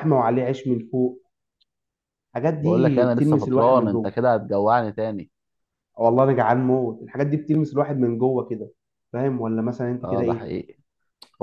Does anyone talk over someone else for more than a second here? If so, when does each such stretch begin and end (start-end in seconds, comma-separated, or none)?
2.6-4.1